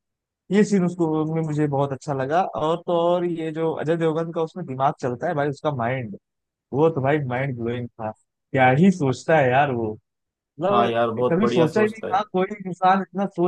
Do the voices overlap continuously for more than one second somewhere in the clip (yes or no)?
yes